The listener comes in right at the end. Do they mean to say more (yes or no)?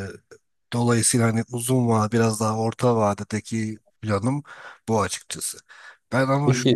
no